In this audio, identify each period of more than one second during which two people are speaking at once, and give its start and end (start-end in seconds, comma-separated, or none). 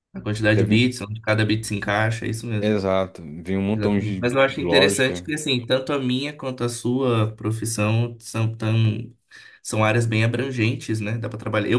3.8-5.2